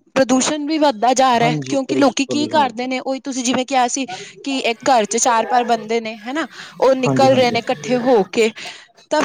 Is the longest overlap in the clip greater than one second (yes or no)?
yes